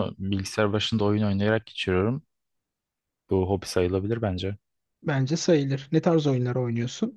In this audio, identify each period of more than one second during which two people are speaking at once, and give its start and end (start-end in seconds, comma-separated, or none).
none